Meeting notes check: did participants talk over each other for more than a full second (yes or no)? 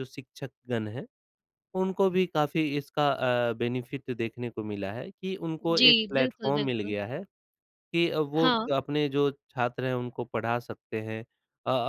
yes